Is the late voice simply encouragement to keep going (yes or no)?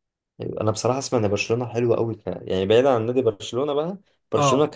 yes